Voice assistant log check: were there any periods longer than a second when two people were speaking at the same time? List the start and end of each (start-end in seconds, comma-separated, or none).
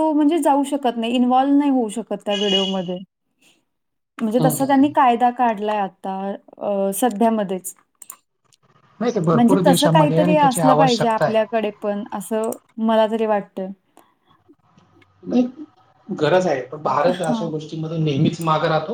9.3-11.4